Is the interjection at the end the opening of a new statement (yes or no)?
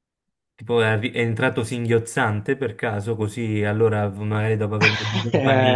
yes